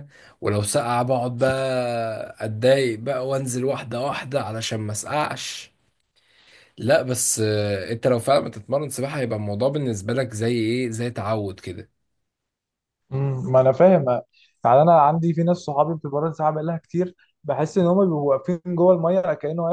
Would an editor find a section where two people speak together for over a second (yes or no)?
no